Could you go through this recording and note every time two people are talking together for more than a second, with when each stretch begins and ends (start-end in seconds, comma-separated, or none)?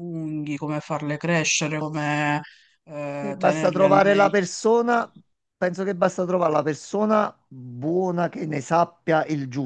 3.2-4.4